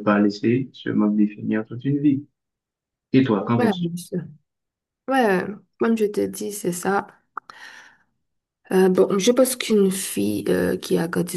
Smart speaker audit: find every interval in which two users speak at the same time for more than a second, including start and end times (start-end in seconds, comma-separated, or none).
none